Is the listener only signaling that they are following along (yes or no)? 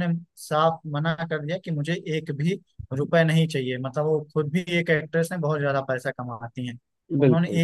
yes